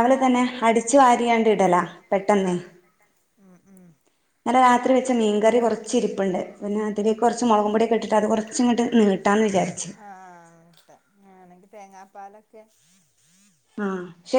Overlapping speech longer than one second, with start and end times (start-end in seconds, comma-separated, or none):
none